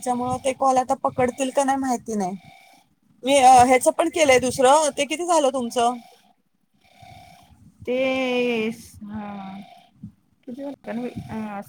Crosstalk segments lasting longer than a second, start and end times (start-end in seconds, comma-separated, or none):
none